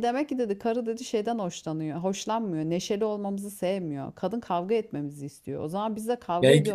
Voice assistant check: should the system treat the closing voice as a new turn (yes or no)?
yes